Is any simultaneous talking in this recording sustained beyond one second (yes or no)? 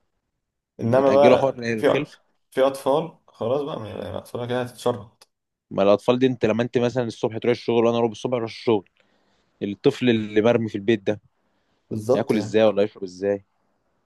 yes